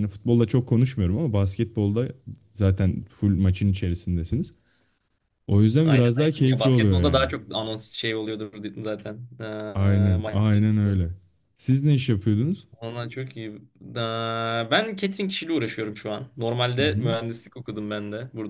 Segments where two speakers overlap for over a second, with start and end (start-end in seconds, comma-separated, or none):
5.8-7.3, 9.7-11.0